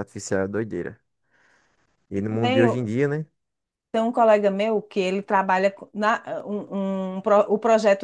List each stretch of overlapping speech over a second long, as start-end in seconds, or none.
none